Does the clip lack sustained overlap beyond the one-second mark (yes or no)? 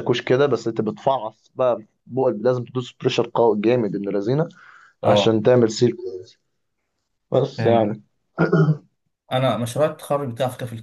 yes